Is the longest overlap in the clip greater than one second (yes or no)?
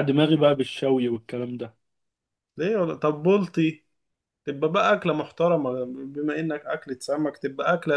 no